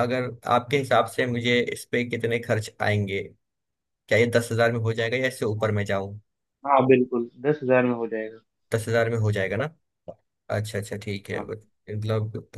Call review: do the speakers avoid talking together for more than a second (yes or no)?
yes